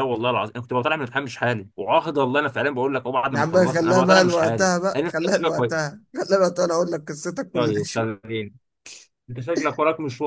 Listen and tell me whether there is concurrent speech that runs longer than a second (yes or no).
yes